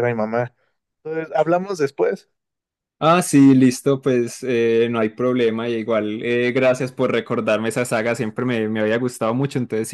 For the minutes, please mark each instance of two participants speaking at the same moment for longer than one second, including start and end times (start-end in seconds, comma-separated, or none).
none